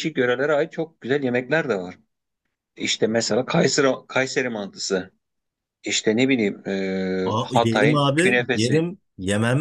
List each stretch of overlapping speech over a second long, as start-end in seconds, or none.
7.2-8.8